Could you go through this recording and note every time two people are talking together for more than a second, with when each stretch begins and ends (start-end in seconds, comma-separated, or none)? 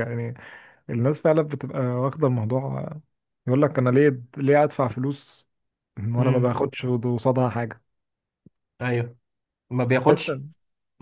none